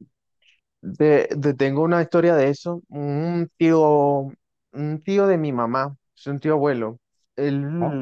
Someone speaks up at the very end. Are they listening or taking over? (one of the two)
listening